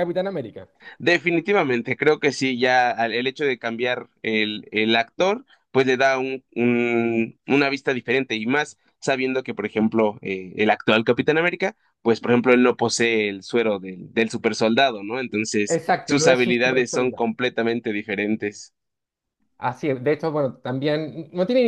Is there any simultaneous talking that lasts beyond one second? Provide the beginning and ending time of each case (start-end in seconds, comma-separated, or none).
15.7-17.2